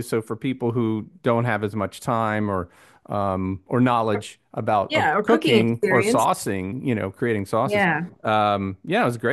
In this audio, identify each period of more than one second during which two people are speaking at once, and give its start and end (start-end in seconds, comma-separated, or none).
4.9-6.2